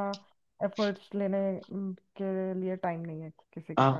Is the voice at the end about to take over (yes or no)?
yes